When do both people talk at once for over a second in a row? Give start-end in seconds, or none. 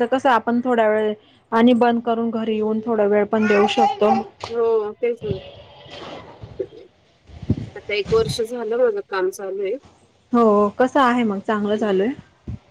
none